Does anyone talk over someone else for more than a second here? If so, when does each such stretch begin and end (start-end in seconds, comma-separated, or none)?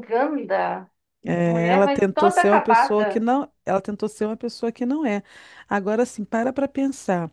1.4-3.2